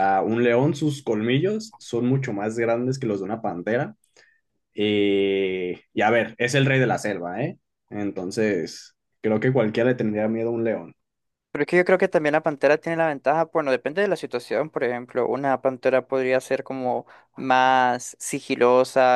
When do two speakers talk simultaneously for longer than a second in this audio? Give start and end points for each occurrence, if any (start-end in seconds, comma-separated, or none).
none